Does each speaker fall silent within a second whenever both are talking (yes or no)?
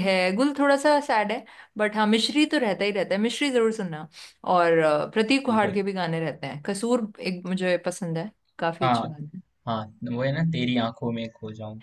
yes